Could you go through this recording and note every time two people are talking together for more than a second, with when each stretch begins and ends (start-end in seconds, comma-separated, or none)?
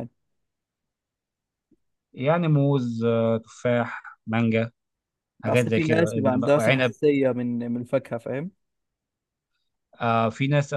5.5-6.9